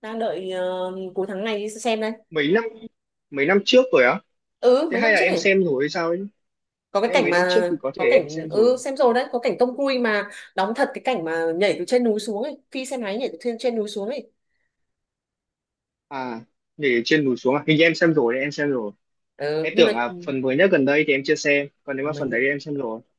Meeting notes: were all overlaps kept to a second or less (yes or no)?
no